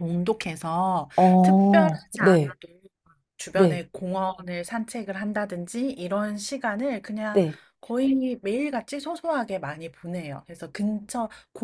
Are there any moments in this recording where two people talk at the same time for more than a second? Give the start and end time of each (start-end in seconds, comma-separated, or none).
1.2-2.6